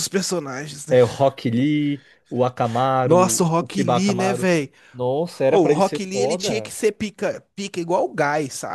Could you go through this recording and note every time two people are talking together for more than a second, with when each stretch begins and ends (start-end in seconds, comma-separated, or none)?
3.0-4.5, 5.5-6.7